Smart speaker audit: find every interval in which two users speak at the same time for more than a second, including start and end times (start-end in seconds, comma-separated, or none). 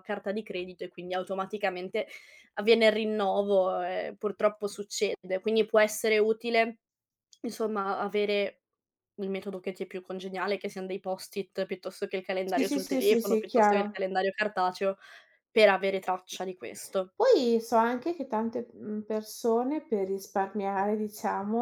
12.4-14.0